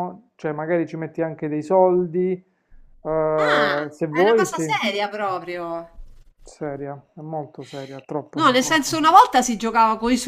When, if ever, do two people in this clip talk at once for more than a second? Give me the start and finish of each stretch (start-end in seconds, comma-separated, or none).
3.4-4.8